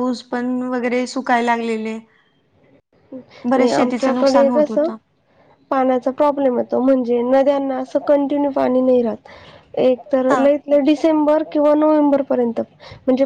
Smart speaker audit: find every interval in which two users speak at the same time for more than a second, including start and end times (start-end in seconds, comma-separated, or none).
3.5-4.9